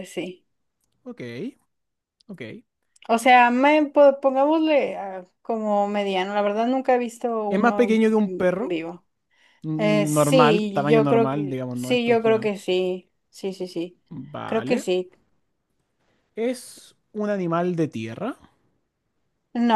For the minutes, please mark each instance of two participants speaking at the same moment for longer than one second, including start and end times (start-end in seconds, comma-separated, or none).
7.5-8.8, 9.8-12.5